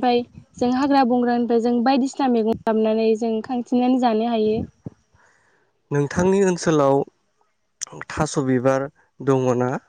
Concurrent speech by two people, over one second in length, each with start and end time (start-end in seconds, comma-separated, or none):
none